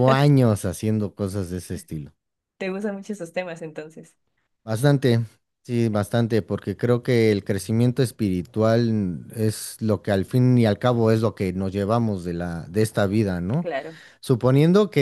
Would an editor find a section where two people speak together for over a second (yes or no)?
no